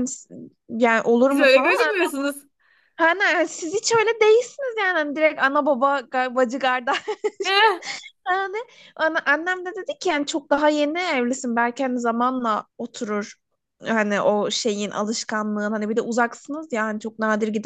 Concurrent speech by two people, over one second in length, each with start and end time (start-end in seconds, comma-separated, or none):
none